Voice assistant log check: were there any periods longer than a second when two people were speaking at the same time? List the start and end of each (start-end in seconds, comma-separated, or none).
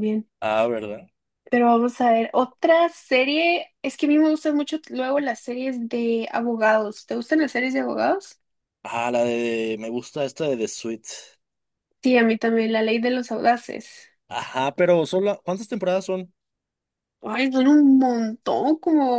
none